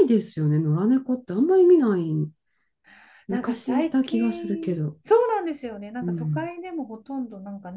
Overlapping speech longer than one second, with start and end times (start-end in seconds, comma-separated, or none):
3.3-5.0